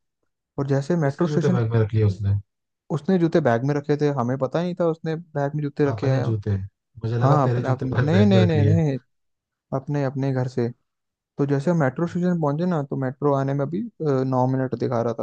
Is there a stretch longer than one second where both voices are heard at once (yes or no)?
yes